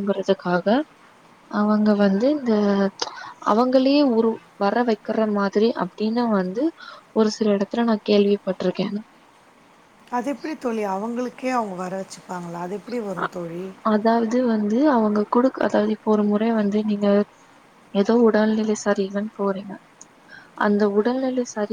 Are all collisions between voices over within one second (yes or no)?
yes